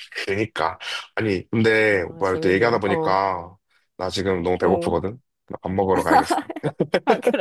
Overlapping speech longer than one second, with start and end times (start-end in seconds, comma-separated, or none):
1.9-3.2